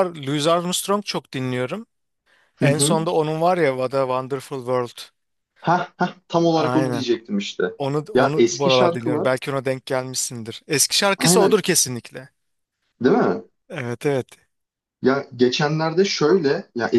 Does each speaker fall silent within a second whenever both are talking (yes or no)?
no